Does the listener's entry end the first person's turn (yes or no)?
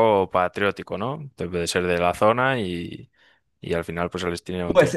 yes